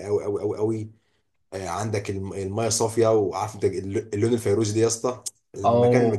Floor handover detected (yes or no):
no